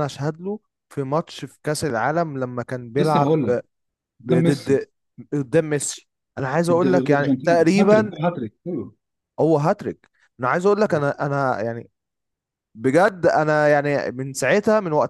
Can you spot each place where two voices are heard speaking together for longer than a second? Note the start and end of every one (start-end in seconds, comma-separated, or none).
6.7-8.1